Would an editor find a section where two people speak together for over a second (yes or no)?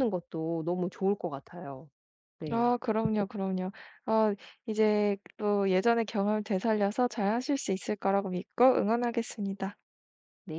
no